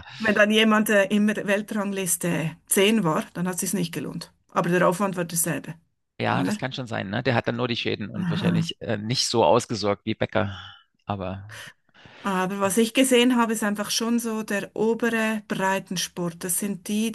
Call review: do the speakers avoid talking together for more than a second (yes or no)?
yes